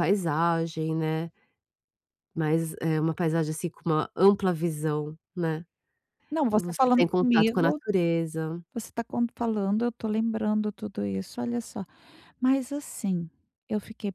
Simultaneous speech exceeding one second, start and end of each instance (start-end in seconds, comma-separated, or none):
6.5-7.8